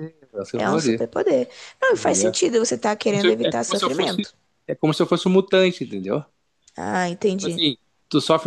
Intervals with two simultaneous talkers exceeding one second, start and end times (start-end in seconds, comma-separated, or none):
3.0-4.3